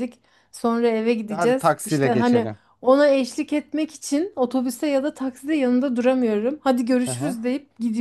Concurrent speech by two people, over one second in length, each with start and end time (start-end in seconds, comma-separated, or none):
1.3-2.6